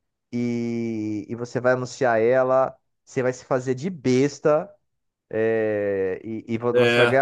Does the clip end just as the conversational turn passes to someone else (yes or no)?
no